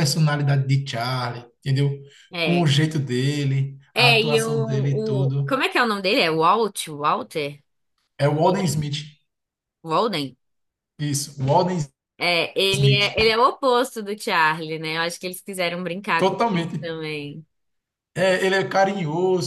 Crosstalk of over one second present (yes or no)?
yes